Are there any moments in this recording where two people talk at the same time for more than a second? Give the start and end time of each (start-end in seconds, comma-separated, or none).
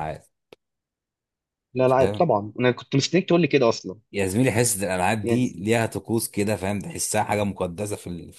none